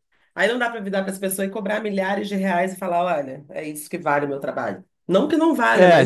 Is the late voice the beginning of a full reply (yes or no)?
yes